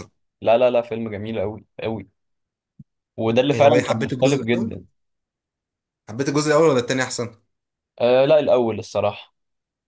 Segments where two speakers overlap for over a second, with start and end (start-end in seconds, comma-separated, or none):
3.5-4.8